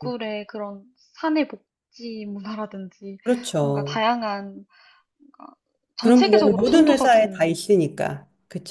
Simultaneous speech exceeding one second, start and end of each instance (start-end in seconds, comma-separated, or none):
6.0-8.2